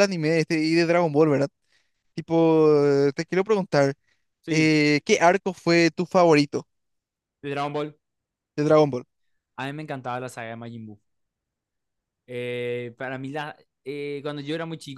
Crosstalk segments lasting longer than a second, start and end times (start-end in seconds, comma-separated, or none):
none